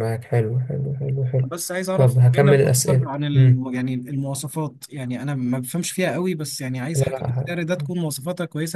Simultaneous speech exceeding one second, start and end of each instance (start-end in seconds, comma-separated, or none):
2.0-3.7